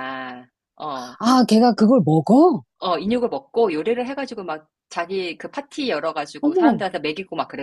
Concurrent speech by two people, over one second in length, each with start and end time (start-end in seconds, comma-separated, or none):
none